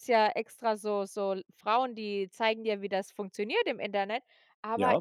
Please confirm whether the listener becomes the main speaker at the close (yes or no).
no